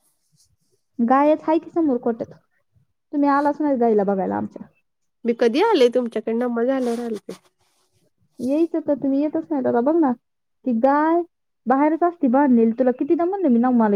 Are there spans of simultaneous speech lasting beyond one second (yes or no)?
no